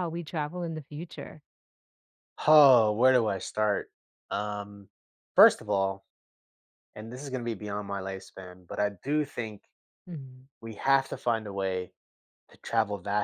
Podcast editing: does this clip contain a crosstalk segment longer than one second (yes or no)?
no